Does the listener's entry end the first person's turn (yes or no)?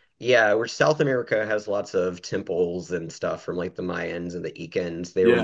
no